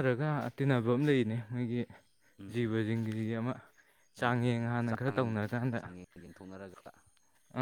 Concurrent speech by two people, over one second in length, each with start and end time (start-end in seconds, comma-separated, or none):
4.2-5.8